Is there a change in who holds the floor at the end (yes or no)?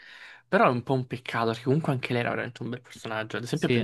no